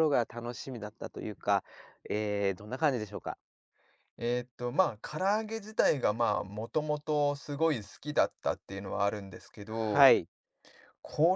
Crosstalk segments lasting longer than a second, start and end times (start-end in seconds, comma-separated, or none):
none